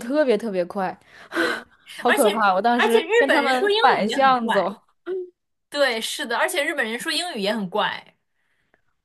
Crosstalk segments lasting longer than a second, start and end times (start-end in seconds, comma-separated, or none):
2.1-4.7